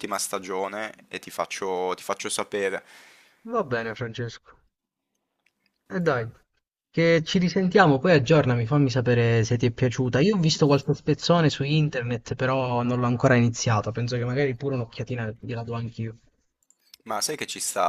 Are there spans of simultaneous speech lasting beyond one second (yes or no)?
no